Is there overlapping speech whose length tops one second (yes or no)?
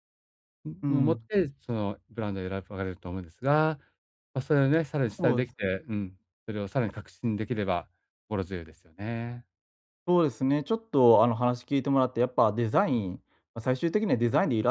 no